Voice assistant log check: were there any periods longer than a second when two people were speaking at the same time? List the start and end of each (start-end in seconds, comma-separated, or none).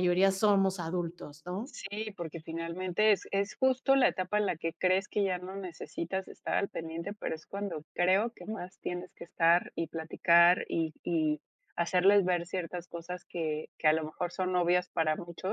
none